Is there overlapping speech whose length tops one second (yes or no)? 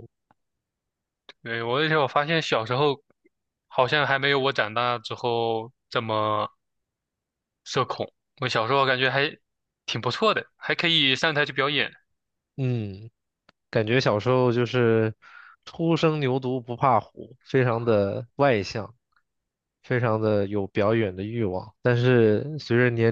no